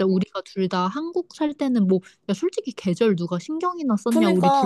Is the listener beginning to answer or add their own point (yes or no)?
yes